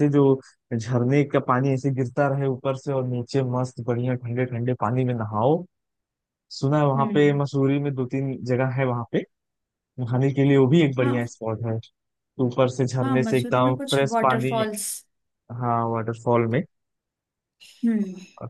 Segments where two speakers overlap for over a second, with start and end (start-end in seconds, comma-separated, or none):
13.0-14.6